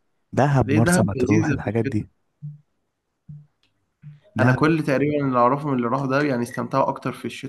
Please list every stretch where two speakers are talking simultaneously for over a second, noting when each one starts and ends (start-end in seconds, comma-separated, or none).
0.6-2.1